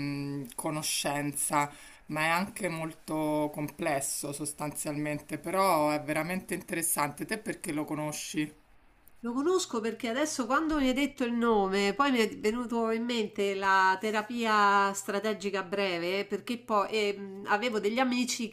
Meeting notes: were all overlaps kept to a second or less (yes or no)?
yes